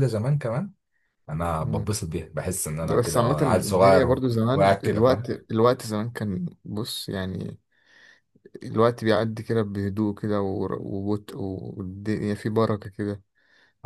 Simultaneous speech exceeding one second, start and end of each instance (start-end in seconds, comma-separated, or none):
2.8-5.3